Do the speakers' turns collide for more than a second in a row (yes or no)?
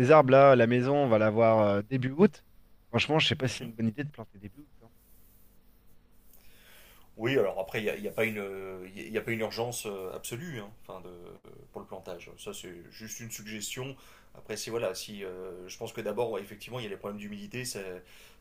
no